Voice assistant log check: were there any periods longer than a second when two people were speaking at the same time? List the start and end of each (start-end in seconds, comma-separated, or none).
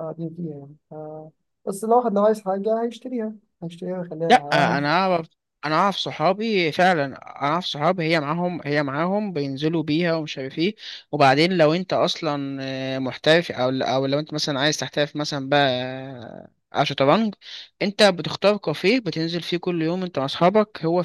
none